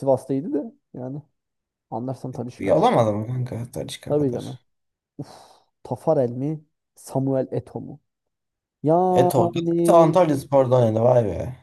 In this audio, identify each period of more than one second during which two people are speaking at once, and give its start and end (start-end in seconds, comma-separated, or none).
none